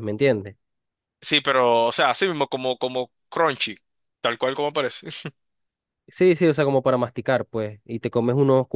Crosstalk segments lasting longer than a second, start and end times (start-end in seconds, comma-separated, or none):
none